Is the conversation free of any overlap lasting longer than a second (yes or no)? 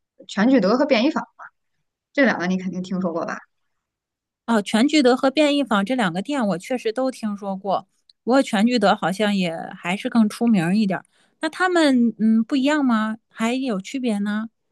yes